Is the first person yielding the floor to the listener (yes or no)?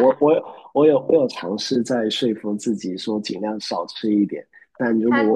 no